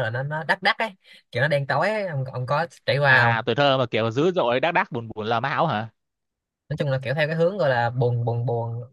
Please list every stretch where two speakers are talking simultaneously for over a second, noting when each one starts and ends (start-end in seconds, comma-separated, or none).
none